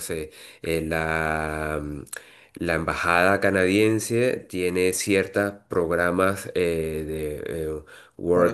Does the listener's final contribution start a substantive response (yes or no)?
no